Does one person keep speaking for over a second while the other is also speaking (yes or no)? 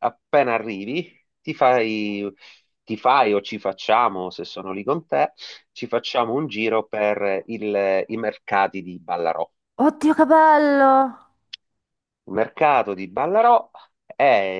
no